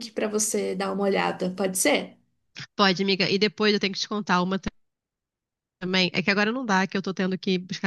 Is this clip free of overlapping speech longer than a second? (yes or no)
yes